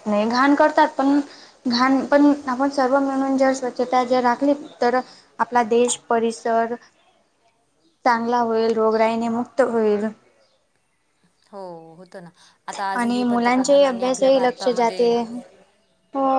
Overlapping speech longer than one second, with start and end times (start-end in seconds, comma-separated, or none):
12.9-15.1